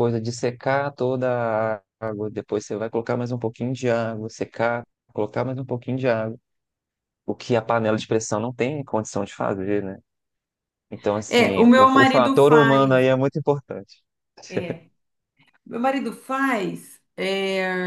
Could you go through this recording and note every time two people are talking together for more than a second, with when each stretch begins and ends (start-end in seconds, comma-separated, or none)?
11.3-13.1